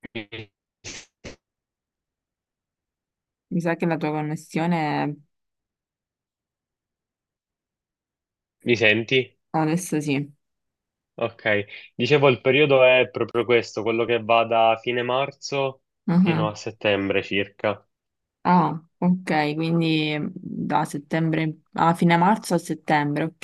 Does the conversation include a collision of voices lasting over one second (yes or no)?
no